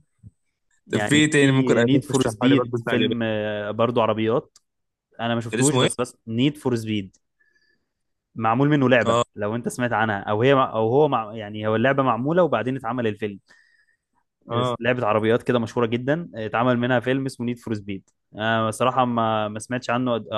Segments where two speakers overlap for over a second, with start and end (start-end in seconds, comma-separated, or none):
0.9-3.2